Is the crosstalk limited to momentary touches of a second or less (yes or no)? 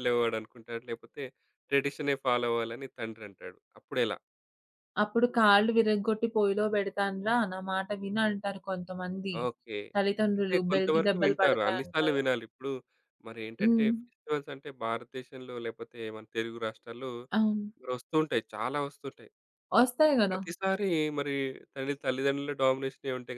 no